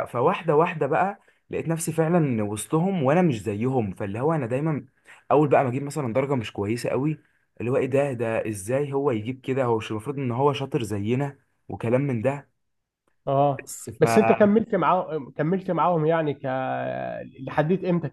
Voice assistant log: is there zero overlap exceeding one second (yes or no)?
yes